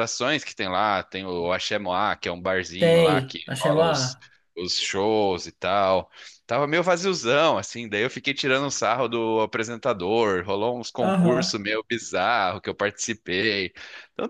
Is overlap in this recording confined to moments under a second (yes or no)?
no